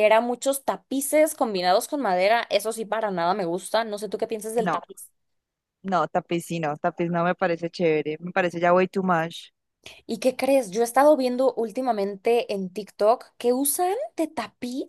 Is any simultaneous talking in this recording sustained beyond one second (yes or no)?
no